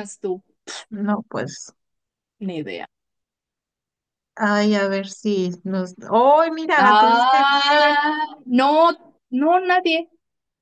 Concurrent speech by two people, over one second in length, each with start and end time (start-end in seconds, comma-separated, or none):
6.8-8.0